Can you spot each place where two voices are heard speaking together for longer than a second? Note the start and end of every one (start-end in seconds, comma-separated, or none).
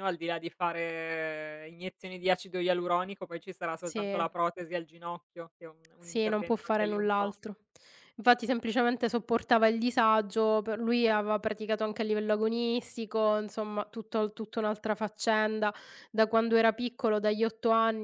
6.0-7.3